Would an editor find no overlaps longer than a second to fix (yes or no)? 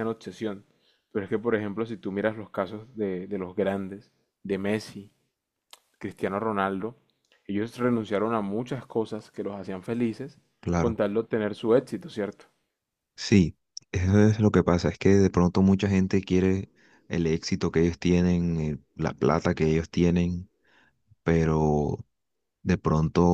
yes